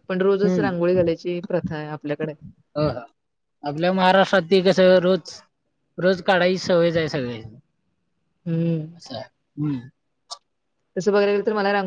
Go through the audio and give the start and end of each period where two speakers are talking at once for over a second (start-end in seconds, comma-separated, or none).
none